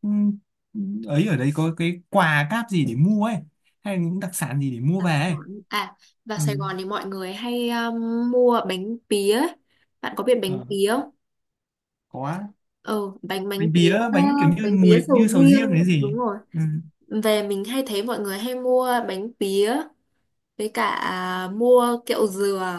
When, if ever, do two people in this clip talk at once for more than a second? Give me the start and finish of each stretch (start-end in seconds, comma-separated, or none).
14.6-16.2